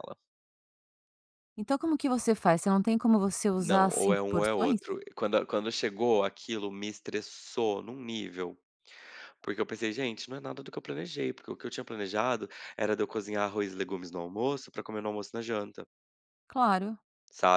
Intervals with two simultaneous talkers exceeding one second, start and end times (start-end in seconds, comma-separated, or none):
3.6-4.8